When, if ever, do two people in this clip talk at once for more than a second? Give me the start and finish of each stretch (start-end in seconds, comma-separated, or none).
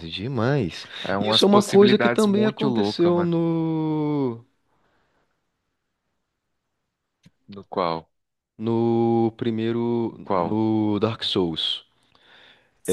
1.0-3.3